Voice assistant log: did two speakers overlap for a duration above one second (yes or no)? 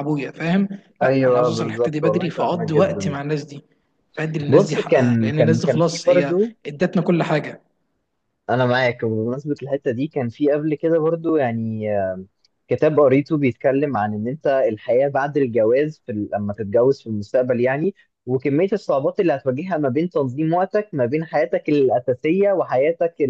yes